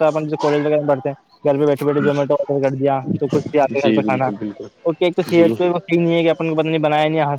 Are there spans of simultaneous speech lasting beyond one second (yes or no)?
yes